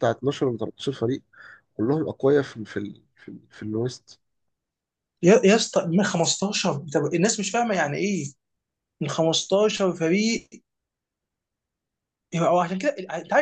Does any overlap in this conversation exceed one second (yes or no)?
no